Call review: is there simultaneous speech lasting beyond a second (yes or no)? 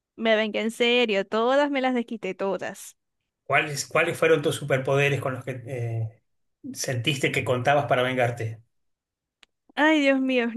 no